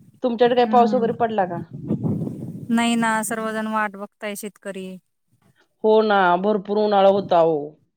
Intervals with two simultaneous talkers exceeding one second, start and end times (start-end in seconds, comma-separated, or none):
none